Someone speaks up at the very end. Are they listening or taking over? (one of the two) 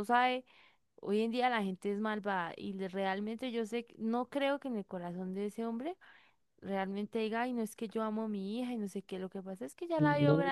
listening